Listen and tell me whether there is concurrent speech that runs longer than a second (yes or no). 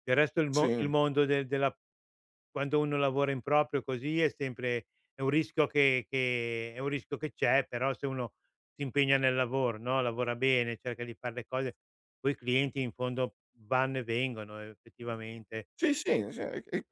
no